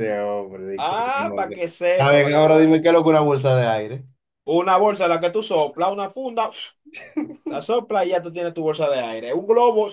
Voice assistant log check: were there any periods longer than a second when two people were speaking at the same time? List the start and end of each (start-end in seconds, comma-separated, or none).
0.8-2.7